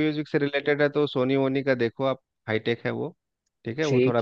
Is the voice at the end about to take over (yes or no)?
no